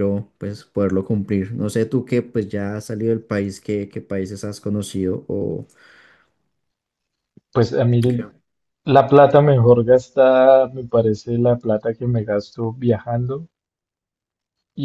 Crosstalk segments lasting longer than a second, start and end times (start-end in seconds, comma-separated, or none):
none